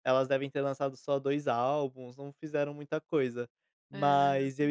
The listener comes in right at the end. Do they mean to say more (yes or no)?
no